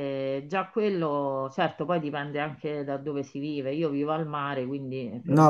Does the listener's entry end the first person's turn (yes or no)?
yes